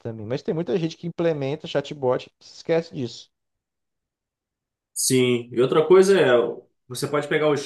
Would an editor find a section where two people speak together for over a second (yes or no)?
no